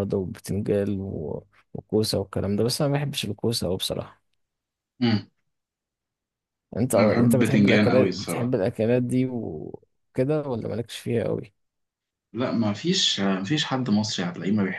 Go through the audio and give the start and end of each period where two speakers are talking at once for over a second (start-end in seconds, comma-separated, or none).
6.9-8.6